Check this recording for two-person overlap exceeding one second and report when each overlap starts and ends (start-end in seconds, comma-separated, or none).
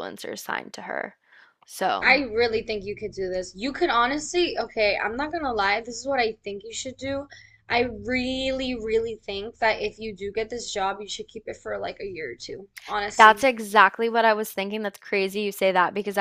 none